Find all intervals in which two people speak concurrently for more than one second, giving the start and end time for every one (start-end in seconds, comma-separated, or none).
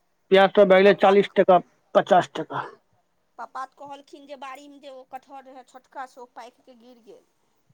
none